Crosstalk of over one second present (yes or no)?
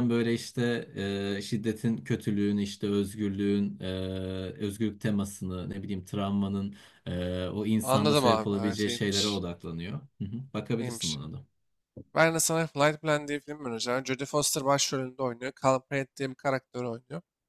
yes